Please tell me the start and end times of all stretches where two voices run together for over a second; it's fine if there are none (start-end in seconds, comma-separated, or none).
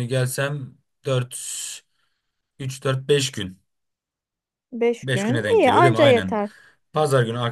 5.0-6.4